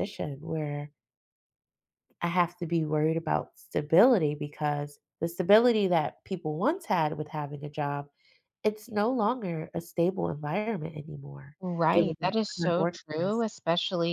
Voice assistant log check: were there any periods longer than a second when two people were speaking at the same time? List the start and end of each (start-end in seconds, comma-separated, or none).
11.9-13.4